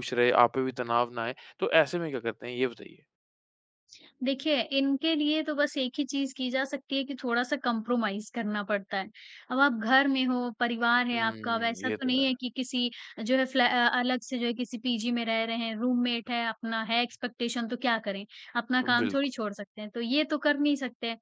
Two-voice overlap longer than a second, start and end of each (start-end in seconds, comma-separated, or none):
11.1-12.4